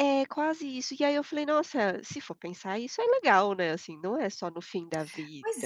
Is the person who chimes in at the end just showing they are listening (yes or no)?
no